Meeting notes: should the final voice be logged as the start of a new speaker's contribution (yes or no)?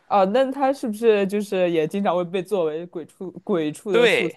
yes